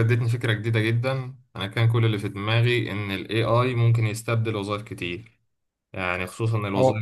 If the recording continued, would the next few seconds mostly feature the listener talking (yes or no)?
no